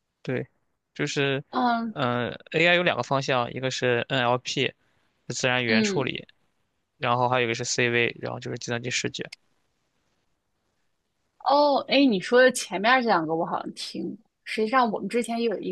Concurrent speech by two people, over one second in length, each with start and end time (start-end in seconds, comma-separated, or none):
none